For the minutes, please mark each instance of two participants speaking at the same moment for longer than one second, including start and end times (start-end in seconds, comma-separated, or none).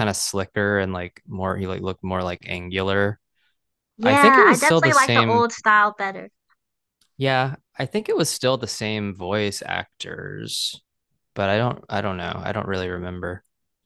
4.0-5.4